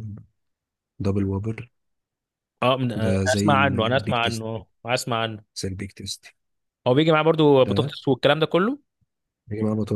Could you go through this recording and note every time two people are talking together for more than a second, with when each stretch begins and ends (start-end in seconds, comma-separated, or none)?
3.0-4.7